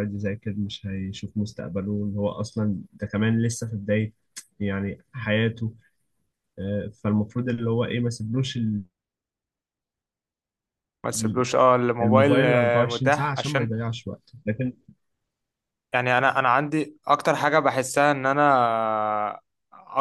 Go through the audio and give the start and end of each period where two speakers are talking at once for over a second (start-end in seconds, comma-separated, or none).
12.0-13.7